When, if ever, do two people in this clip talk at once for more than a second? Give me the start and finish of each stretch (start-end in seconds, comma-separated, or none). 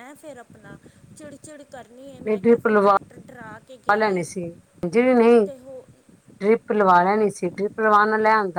none